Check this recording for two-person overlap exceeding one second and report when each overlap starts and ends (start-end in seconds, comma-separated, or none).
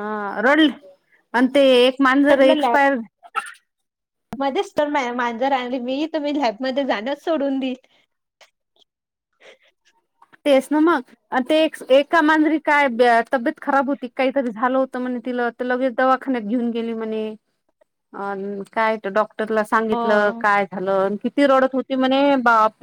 none